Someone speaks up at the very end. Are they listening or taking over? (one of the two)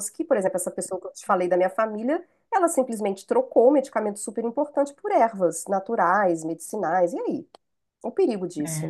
taking over